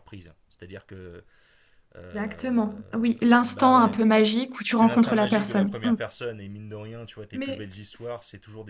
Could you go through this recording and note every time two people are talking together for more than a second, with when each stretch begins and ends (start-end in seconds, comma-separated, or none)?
4.7-6.0